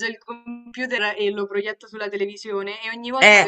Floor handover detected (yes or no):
no